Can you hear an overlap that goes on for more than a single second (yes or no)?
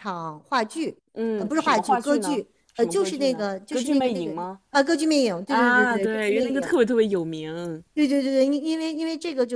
yes